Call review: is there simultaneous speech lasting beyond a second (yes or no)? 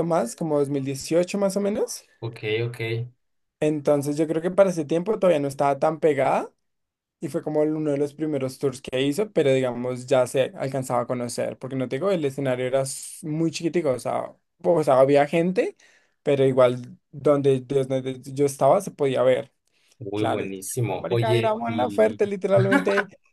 yes